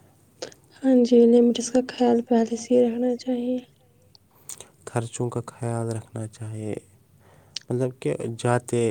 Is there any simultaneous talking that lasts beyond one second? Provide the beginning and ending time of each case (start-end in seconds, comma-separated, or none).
1.6-3.6